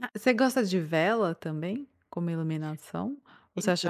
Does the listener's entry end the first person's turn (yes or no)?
no